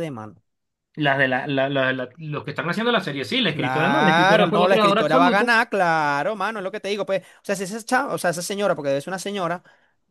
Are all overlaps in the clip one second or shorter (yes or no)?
no